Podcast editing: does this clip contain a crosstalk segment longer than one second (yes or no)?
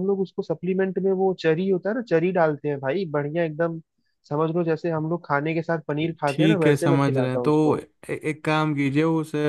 yes